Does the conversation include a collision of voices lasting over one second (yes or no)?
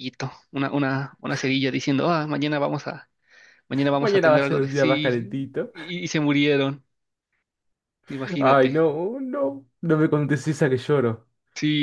yes